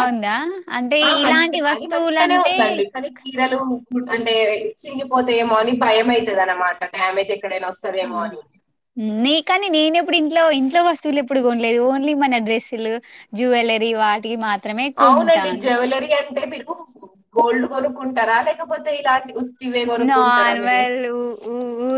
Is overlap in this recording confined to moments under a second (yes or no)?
no